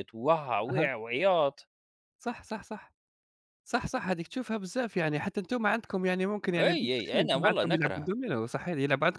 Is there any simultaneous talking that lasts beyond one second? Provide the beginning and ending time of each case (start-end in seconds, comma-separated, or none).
6.6-8.1